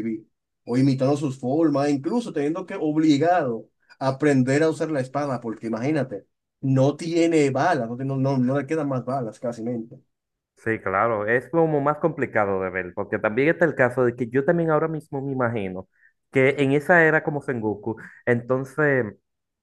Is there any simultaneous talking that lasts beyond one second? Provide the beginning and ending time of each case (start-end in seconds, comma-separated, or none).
none